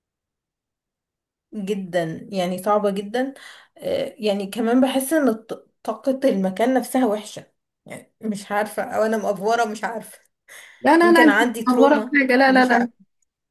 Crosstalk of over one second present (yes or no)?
yes